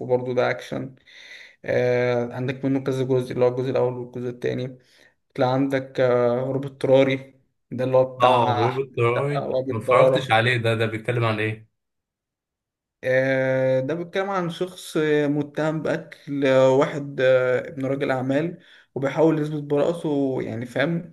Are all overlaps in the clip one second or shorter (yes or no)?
no